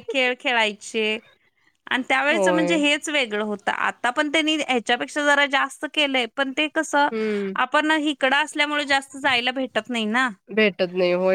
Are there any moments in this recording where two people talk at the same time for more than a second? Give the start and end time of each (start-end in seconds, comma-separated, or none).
none